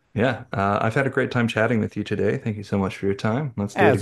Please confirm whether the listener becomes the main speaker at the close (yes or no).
yes